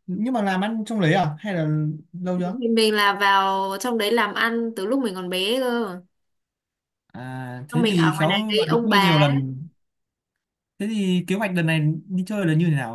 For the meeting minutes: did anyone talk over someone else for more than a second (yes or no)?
yes